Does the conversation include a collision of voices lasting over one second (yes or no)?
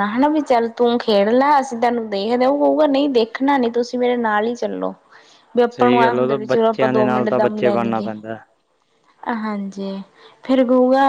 yes